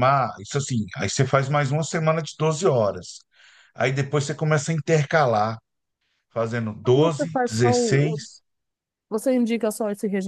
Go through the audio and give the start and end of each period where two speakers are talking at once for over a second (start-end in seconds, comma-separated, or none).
7.0-8.2